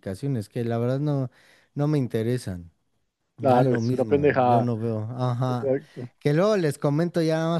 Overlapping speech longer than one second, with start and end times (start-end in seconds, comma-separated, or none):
3.4-4.7